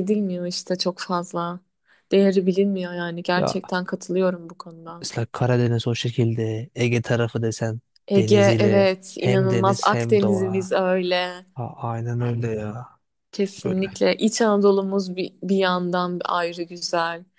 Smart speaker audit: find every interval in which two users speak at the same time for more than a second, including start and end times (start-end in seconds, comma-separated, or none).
8.2-10.7